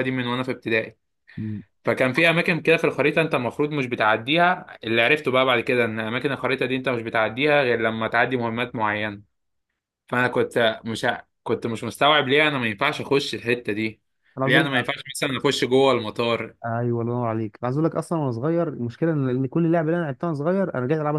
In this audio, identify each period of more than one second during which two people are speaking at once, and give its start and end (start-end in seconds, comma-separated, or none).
none